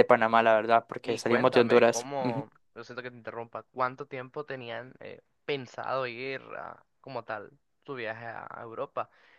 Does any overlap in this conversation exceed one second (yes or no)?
yes